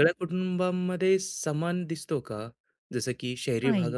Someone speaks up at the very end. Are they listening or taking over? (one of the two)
listening